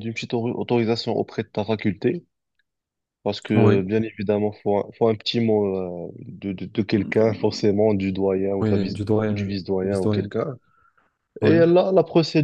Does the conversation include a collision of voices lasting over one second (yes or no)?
yes